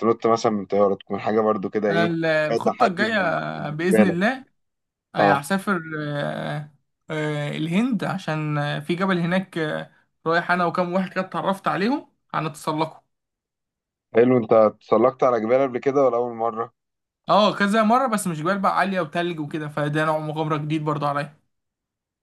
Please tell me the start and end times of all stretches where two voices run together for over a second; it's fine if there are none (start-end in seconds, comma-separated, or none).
1.9-4.2